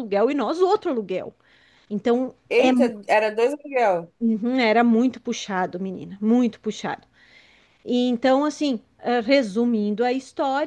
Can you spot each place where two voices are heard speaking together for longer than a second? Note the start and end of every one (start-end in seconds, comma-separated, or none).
none